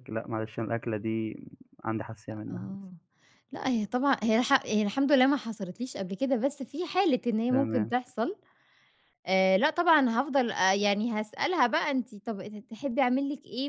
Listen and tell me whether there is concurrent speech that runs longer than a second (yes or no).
no